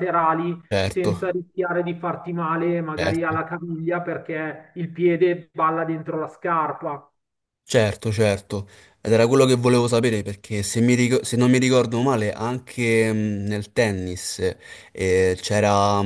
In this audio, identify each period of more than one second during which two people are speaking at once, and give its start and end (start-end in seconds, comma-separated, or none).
none